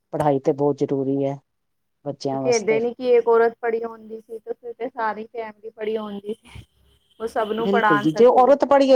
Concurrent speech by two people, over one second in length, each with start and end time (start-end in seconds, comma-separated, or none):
none